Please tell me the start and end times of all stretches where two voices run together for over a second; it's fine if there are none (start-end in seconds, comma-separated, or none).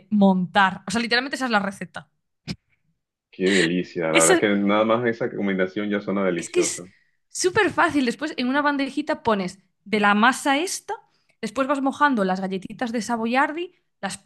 none